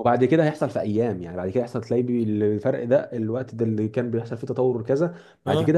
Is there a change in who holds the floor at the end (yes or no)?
no